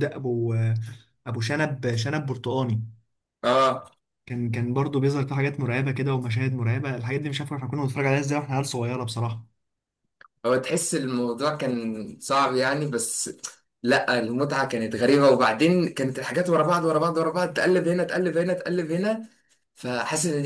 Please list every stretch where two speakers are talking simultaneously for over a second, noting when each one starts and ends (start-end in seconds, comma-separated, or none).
none